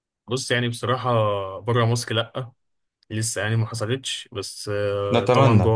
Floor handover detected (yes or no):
no